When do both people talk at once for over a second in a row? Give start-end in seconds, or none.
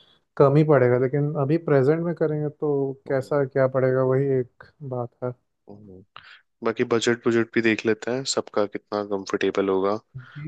none